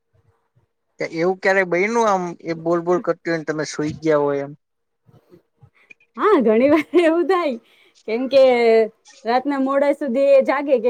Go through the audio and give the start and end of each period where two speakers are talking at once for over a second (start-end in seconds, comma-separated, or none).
none